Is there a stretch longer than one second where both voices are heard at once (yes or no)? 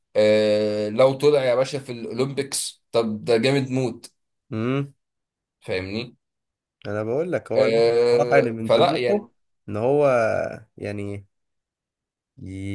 yes